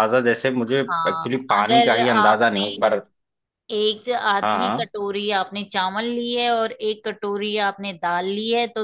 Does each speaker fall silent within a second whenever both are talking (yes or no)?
no